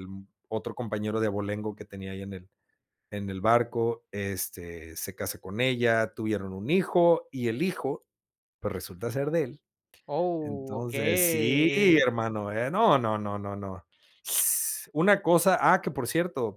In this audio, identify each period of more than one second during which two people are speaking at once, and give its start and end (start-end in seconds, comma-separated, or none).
10.4-12.1